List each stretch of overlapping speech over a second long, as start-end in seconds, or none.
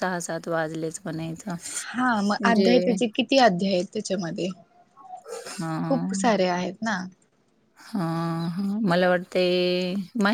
none